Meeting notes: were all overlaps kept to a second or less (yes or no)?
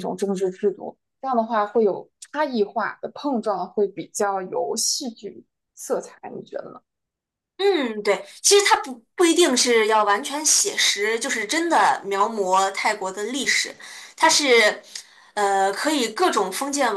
yes